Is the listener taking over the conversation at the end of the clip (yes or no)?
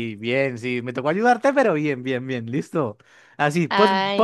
no